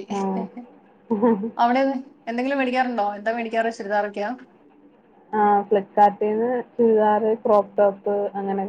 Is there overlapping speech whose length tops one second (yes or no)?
no